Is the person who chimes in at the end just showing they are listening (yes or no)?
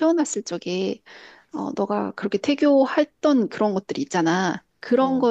yes